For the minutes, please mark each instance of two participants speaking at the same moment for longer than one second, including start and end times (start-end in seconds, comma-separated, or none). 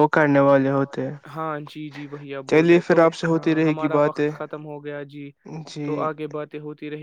2.5-4.3